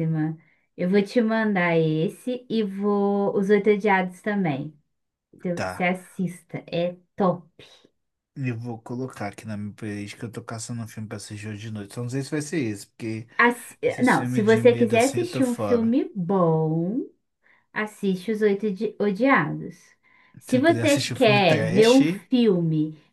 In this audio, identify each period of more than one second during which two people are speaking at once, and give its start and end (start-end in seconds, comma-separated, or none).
13.8-15.9, 20.5-22.0